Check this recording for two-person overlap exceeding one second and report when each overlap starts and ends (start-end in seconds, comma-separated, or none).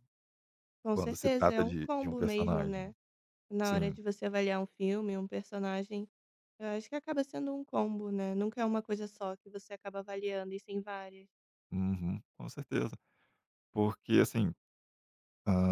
0.9-2.9